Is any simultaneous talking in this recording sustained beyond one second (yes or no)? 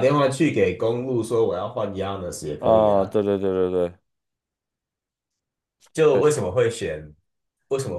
no